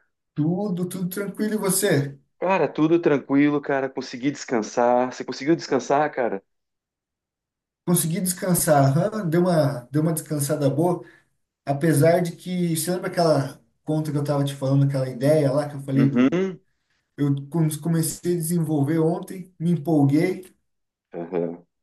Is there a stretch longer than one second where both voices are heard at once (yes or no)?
no